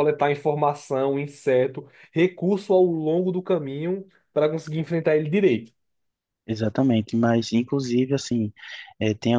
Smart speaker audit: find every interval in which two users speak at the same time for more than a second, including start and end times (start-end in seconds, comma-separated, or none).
none